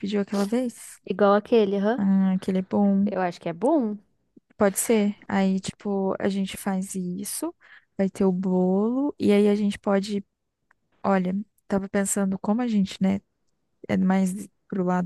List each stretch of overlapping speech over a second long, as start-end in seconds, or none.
none